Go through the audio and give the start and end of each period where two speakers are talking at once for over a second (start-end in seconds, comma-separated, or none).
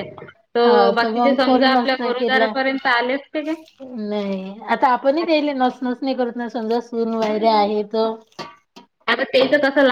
1.0-2.5